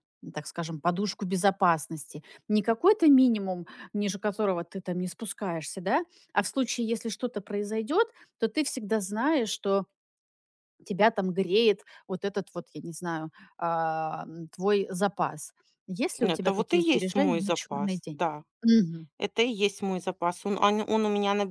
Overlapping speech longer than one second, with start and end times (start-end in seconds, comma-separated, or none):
16.2-18.2